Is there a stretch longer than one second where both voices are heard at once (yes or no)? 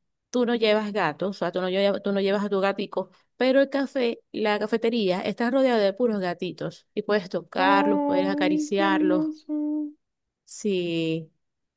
yes